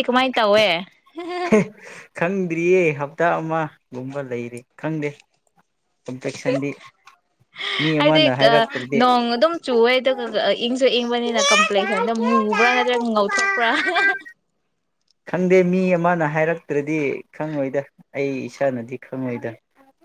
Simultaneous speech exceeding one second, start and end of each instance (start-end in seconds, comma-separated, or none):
none